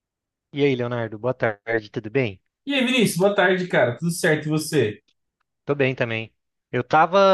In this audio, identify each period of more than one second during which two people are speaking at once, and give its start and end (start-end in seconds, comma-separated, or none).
none